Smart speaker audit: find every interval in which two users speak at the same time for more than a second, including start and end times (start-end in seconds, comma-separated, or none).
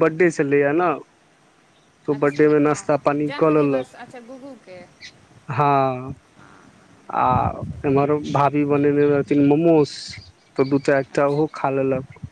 2.2-3.9